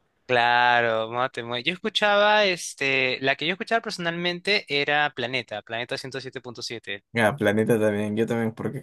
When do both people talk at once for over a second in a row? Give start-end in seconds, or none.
none